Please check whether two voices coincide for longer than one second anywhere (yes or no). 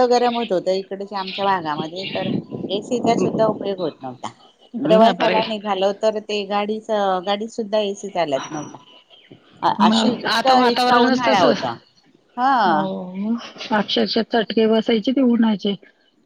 yes